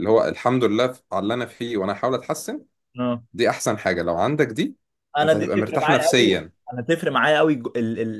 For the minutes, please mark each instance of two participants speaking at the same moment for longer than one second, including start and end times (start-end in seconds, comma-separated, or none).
5.2-6.5